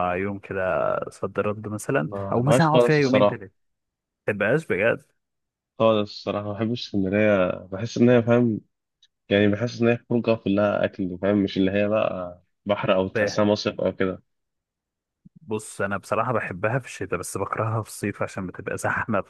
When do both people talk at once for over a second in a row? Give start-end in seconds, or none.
2.0-3.4